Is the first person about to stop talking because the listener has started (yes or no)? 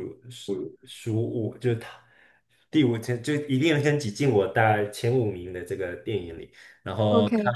no